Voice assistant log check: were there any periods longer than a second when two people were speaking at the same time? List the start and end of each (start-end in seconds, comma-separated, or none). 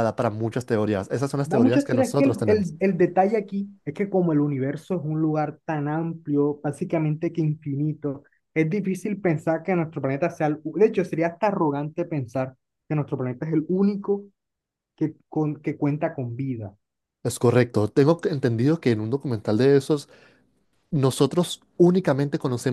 1.4-2.7